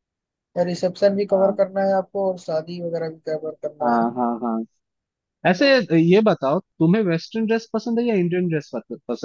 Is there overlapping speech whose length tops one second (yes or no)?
no